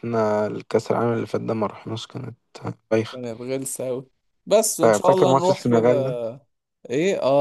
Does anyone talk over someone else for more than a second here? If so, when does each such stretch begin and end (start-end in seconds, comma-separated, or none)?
4.8-6.2